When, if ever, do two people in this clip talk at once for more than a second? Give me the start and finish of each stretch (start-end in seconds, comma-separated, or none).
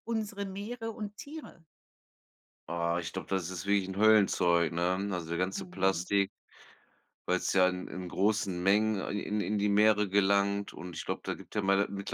none